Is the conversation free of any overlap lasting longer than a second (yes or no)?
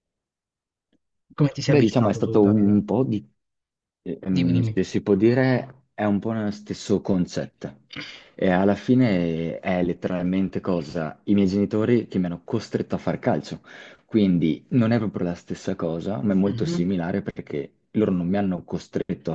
no